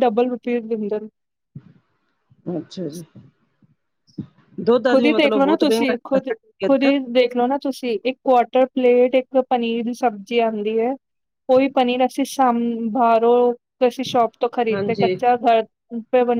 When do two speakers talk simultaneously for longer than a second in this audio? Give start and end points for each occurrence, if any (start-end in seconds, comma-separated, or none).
4.9-6.9